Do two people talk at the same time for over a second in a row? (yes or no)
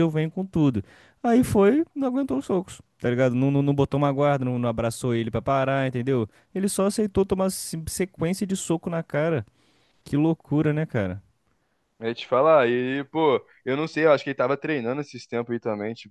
no